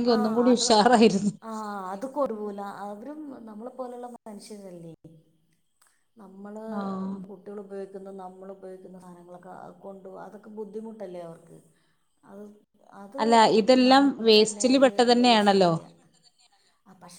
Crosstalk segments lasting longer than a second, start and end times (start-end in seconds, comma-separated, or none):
none